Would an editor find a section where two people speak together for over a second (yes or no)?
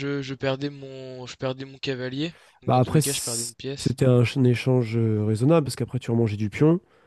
yes